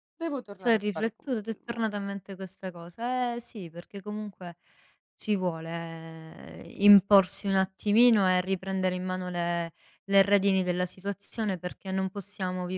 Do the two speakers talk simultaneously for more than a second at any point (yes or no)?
yes